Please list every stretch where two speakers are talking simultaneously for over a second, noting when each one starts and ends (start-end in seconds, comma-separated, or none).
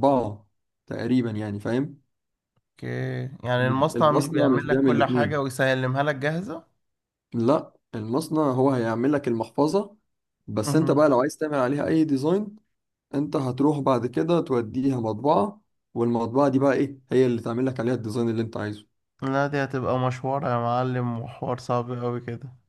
3.6-5.4